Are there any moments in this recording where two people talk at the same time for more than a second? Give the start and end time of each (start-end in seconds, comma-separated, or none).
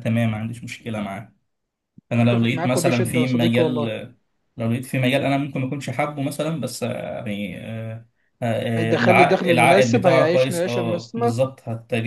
2.2-3.8, 8.8-11.3